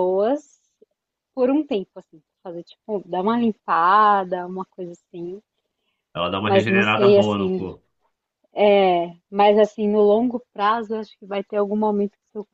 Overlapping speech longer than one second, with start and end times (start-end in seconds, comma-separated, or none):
6.5-7.7